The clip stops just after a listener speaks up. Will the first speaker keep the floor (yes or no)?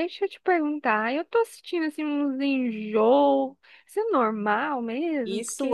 no